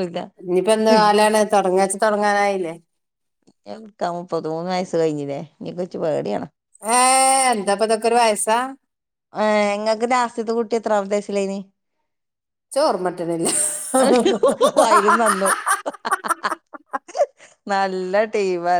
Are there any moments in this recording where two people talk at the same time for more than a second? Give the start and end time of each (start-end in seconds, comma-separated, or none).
none